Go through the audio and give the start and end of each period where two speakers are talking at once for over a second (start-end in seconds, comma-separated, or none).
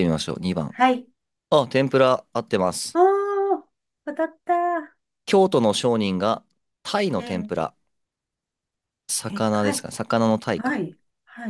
none